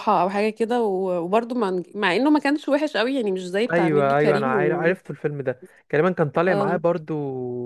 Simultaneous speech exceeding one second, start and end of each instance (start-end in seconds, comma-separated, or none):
3.7-4.9